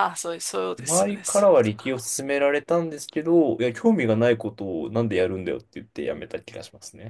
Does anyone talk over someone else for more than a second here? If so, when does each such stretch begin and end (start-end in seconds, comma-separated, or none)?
0.8-2.0